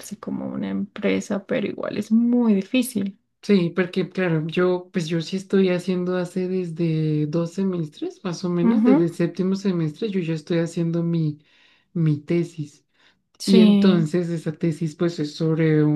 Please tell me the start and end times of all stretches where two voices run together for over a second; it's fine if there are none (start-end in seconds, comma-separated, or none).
none